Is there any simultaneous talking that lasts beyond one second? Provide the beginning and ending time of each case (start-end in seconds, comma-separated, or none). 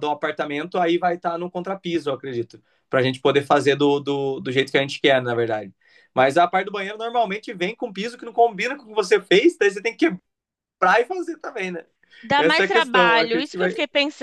12.4-13.7